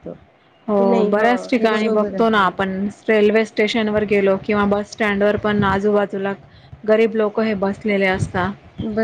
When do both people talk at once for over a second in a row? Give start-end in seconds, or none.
0.8-2.7